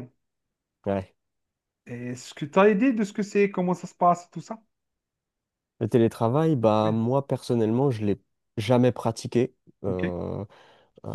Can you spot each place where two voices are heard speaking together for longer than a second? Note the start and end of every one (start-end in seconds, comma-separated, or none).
none